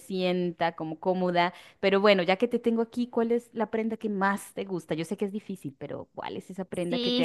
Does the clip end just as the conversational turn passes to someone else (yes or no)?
yes